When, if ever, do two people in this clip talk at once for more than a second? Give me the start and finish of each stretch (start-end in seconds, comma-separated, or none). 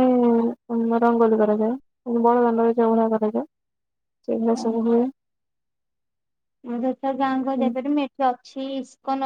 none